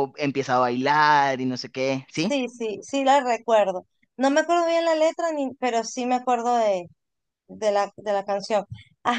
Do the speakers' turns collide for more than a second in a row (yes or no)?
no